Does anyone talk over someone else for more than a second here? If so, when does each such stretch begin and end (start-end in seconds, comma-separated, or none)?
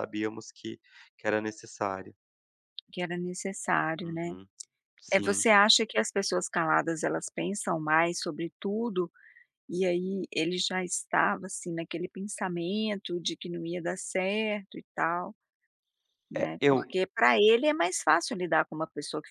none